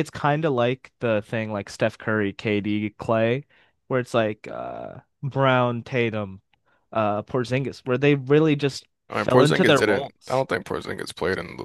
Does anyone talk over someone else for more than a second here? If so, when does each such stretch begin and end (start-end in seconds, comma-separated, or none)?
9.1-10.5